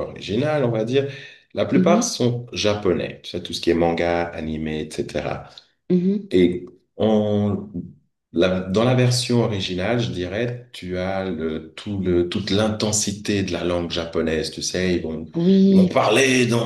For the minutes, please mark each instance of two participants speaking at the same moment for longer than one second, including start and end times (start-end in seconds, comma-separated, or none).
none